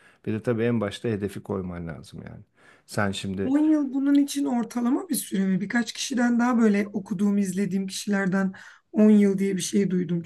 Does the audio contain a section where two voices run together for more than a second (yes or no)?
no